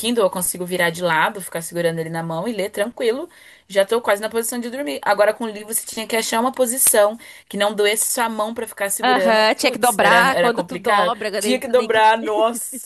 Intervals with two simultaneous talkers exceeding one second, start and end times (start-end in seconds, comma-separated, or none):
9.0-12.1